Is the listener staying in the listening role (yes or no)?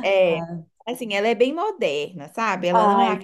yes